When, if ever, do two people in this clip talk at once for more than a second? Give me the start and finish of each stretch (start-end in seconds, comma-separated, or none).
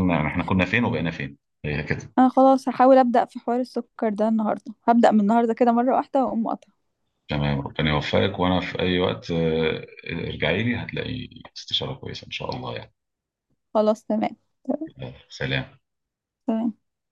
none